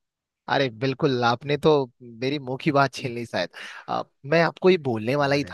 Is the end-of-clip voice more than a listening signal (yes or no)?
no